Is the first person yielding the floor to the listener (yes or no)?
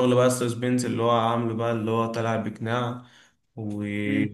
yes